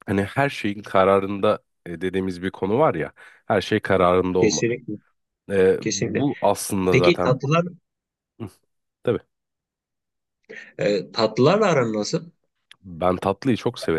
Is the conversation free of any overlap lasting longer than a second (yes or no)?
yes